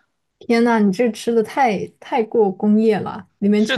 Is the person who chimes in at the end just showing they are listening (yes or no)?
no